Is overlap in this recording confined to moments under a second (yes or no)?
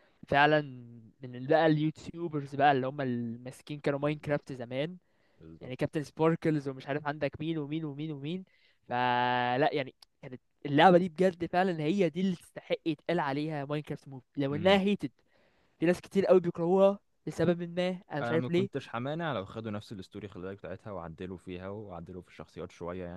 yes